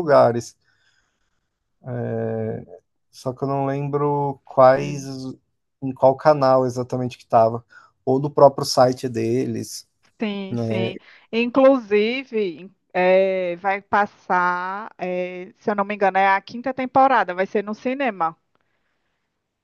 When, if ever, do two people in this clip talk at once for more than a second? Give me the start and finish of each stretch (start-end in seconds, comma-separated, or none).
none